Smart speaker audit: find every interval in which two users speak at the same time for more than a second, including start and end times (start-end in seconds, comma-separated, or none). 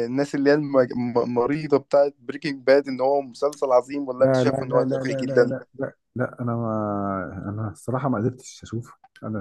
4.2-5.5